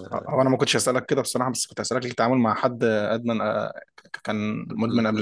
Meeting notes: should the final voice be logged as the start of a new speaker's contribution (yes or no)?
yes